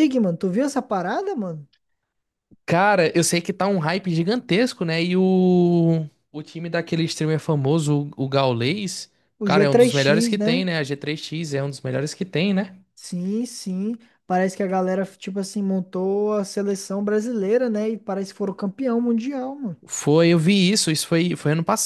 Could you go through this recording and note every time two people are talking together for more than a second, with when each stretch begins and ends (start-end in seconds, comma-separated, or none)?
9.4-10.6